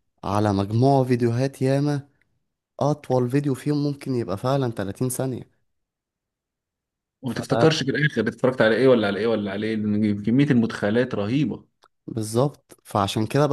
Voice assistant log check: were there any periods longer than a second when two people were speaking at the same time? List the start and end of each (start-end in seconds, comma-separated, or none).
none